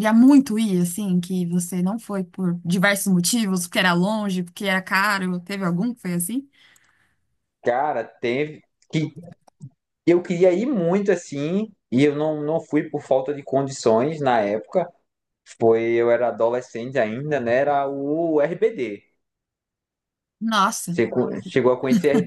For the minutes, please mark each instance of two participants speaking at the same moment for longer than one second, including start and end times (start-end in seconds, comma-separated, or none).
none